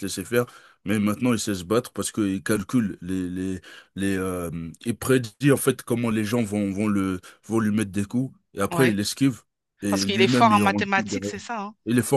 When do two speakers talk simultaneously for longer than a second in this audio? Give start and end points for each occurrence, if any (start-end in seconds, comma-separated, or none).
9.9-11.3